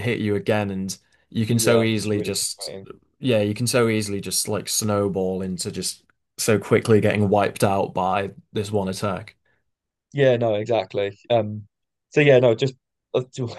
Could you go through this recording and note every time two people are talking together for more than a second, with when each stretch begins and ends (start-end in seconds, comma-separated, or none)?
1.5-2.7